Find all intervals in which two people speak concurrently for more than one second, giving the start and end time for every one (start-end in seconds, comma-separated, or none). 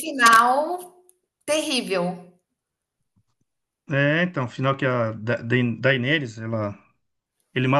none